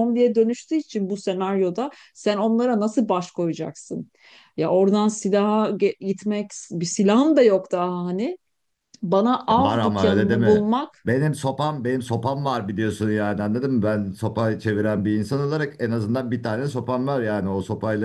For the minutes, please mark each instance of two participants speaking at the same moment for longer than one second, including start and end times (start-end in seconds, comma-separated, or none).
9.6-11.2